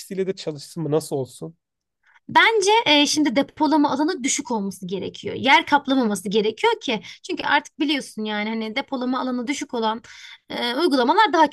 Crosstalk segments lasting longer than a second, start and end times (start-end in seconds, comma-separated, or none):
none